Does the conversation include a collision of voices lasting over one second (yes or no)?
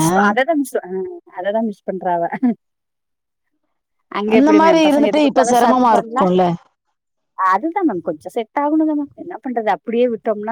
yes